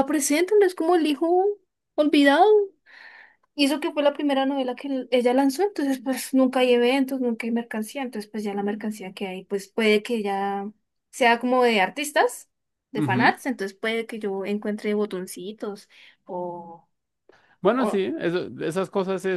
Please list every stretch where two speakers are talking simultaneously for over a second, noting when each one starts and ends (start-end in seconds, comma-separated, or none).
none